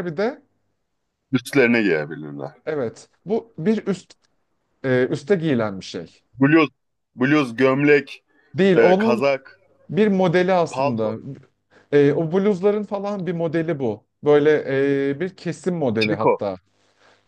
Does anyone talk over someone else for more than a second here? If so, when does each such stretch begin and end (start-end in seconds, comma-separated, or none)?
none